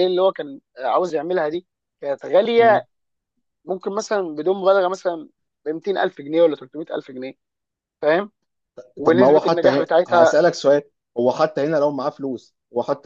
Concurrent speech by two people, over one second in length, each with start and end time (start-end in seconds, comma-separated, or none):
9.0-10.3